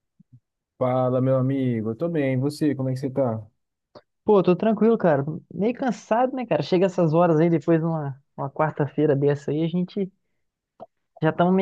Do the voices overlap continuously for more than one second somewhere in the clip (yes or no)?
no